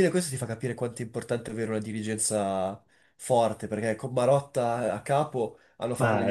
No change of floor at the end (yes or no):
yes